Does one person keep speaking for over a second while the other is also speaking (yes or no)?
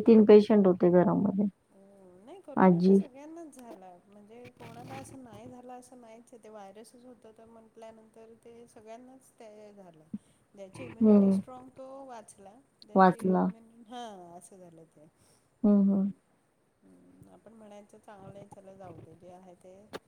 no